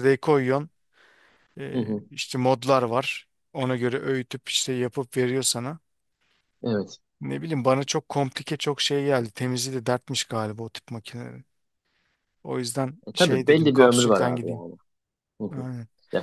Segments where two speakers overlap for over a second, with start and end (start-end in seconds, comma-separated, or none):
13.1-14.6